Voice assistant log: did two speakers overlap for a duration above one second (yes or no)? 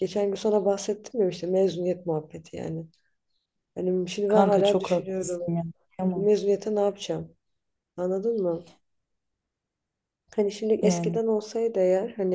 yes